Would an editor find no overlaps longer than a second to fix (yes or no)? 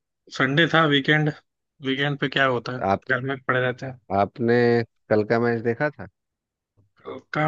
yes